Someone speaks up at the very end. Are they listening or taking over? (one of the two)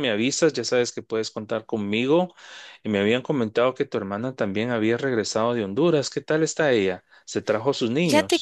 taking over